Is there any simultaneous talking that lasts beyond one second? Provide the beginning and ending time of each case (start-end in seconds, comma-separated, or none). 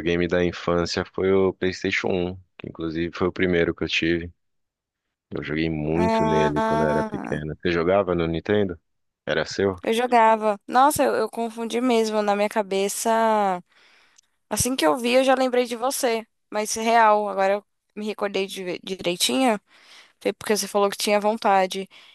6.0-7.4